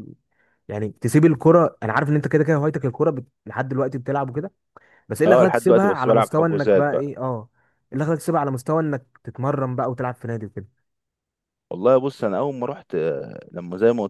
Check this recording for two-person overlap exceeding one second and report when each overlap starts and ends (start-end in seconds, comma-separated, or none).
5.3-7.1